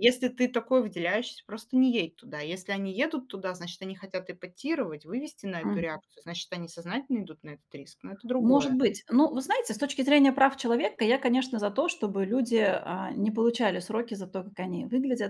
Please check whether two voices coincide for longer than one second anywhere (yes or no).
no